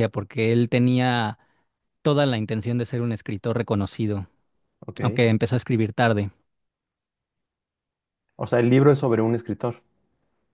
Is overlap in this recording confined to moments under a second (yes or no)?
yes